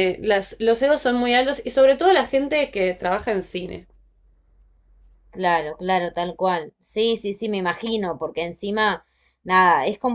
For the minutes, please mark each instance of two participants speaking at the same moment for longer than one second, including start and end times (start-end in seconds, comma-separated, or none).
none